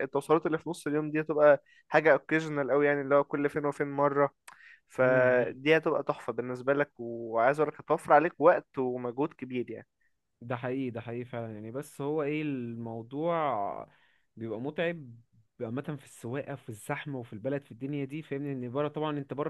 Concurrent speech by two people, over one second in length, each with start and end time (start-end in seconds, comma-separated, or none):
none